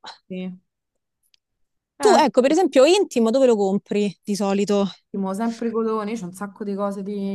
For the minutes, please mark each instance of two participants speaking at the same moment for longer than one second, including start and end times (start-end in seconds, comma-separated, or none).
none